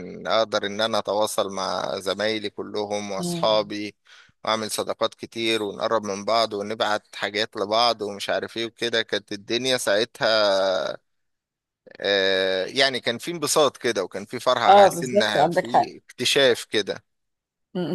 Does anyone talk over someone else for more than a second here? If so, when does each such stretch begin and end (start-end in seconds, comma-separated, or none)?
14.7-15.9